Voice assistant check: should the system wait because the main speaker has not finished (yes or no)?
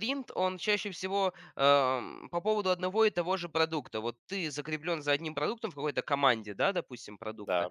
yes